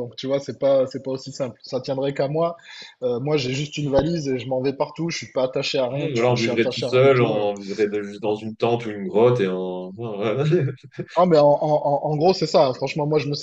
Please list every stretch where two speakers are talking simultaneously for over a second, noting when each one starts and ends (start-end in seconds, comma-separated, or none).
6.1-7.5